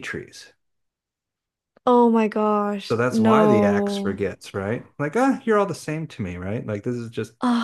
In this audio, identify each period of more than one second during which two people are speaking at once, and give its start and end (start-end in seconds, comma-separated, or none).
2.9-4.2